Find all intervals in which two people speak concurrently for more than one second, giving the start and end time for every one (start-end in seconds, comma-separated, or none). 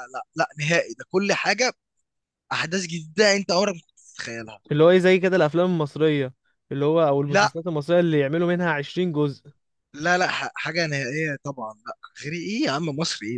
none